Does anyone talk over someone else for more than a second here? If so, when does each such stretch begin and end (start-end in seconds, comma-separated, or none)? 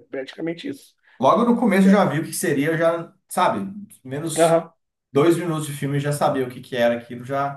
none